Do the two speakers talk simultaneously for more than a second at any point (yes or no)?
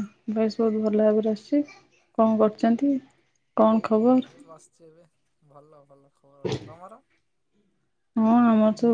no